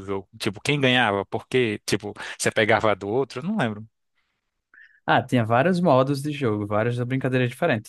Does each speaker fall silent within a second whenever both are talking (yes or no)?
yes